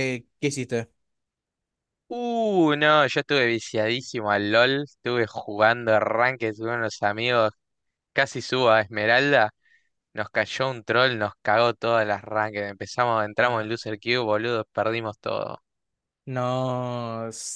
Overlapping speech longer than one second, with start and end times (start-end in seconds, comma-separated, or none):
none